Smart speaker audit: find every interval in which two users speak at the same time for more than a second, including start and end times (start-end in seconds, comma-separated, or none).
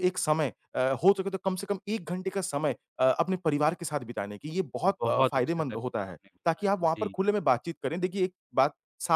4.9-7.2